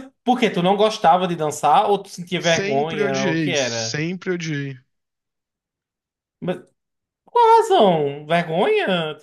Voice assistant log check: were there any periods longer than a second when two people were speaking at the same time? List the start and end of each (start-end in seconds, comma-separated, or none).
2.4-4.0